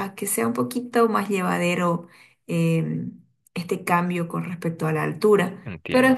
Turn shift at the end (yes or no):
no